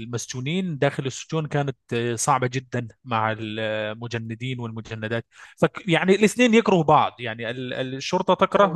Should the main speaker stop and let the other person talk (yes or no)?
no